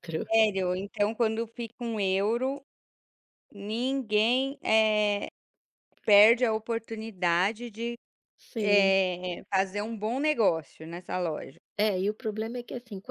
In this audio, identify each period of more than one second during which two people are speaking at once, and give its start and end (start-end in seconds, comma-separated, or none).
none